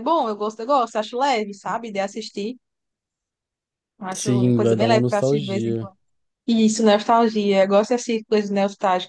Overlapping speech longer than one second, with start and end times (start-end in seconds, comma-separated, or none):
4.1-5.9